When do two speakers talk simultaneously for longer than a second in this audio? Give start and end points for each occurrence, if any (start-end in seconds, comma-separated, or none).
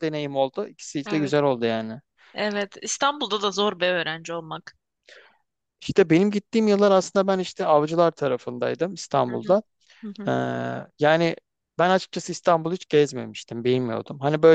none